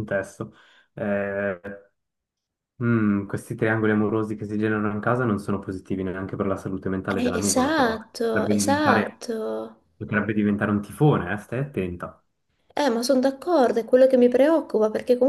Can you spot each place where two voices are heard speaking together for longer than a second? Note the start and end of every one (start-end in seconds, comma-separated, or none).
7.2-9.2